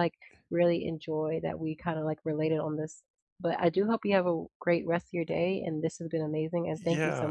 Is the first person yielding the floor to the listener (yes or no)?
yes